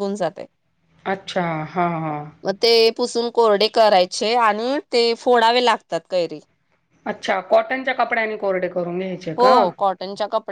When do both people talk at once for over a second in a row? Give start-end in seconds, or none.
none